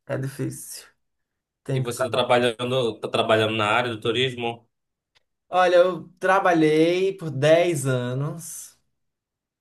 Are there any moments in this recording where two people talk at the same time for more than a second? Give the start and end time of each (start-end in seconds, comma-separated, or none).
none